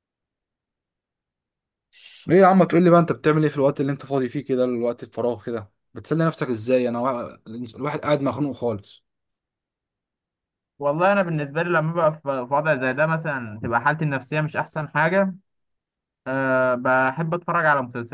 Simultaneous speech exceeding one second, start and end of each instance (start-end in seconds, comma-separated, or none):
none